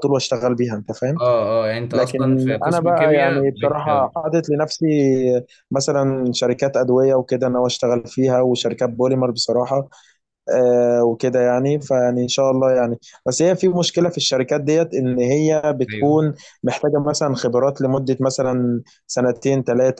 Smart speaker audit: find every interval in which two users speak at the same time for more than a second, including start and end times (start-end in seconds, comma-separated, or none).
1.9-3.8